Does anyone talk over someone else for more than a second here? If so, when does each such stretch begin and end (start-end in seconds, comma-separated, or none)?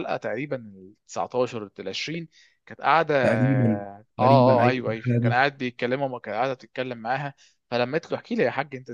3.2-5.3